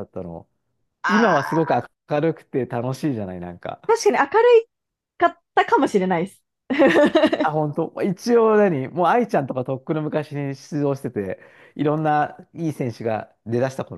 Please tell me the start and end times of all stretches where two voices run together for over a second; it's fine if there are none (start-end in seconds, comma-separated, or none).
none